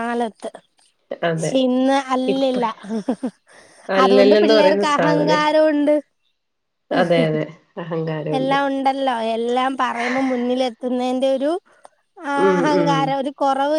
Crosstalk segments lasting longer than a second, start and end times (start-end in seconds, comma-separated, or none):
4.0-5.4